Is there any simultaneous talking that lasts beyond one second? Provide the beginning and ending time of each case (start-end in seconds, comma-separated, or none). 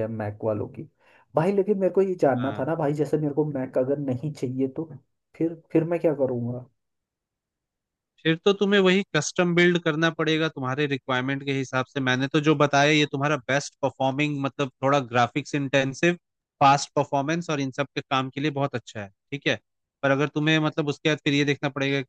none